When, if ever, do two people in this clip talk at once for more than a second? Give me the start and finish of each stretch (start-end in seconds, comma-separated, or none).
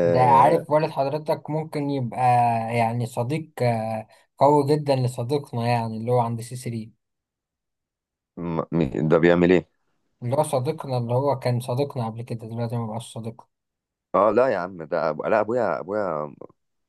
none